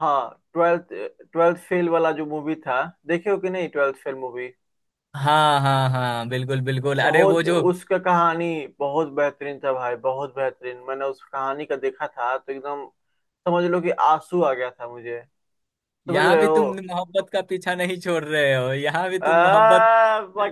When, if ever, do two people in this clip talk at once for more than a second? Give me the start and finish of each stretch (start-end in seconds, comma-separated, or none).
none